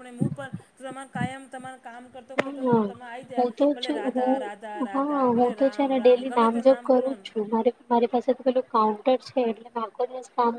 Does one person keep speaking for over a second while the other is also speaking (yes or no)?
yes